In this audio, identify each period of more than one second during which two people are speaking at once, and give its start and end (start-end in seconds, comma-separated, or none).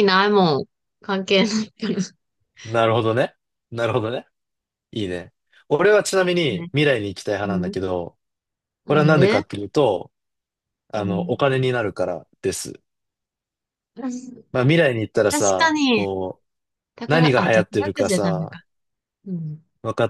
17.1-18.6